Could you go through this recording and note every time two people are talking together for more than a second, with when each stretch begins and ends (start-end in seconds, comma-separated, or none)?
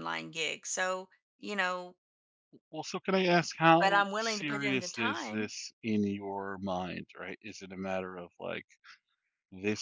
3.8-5.5